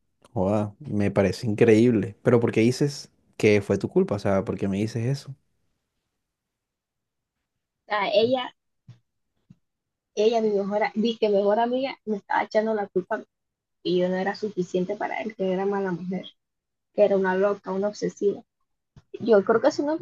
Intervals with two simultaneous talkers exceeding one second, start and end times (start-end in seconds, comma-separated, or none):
none